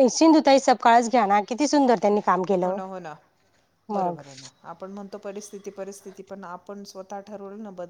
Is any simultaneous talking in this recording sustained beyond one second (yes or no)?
no